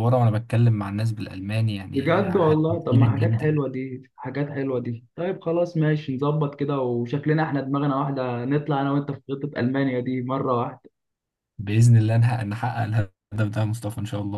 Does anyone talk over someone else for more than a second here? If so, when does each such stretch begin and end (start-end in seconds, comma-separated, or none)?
1.9-3.6